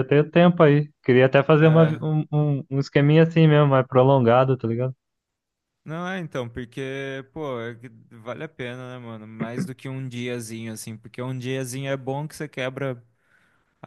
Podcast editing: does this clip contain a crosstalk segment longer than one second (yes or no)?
no